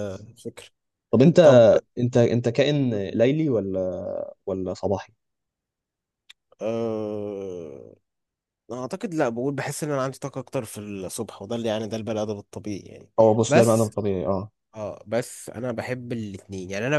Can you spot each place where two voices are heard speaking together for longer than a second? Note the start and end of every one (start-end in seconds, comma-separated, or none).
none